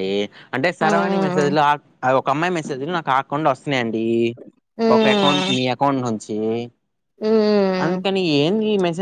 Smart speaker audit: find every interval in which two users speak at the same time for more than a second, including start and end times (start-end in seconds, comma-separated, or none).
none